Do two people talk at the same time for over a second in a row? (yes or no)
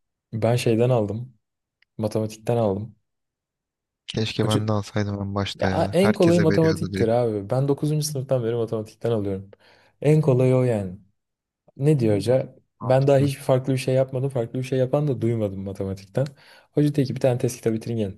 yes